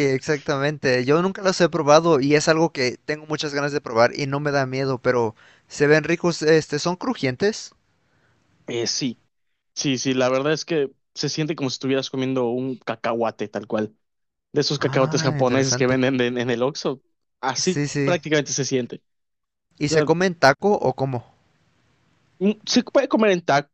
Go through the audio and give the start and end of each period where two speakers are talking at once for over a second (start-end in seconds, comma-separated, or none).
14.8-16.0